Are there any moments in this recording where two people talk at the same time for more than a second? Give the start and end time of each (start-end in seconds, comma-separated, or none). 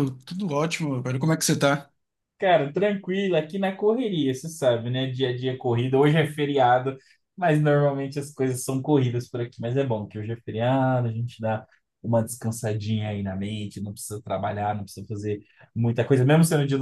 none